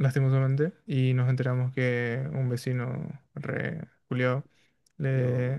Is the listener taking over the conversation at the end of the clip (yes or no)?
no